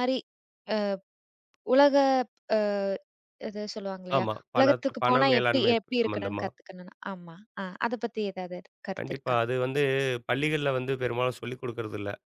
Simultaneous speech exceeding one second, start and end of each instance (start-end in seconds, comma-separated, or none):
4.2-6.5